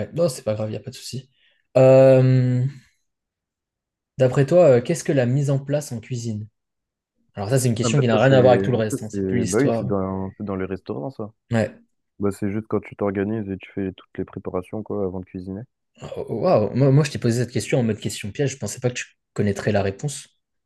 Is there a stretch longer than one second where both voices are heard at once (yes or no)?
yes